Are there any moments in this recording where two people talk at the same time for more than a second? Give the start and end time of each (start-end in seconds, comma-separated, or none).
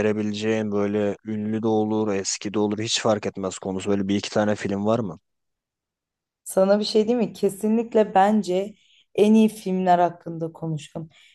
none